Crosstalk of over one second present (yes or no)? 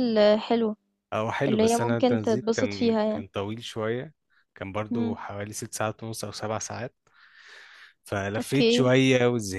yes